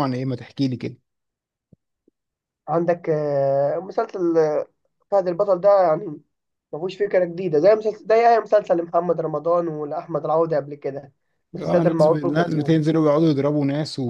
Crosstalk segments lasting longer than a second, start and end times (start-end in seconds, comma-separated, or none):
11.6-12.8